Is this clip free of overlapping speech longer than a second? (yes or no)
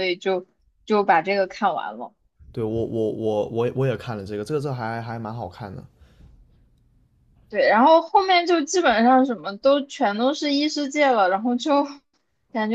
yes